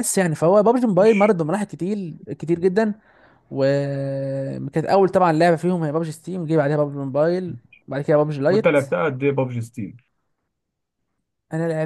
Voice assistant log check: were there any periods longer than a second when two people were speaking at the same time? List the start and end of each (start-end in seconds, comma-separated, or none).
none